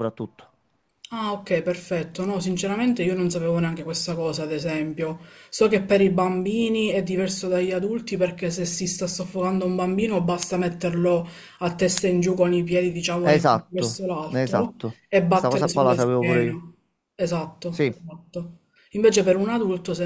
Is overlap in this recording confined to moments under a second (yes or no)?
no